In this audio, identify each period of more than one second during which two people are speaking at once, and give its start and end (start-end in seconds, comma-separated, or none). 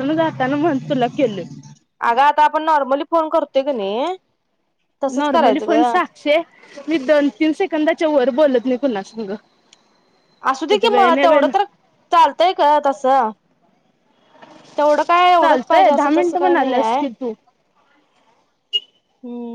15.4-17.0